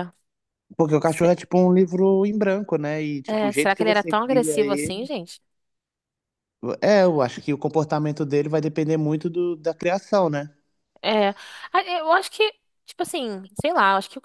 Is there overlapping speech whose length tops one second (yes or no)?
yes